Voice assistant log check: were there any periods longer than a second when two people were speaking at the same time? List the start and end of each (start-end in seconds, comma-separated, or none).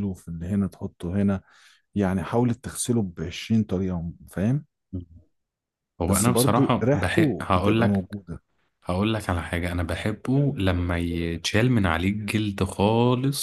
6.0-8.2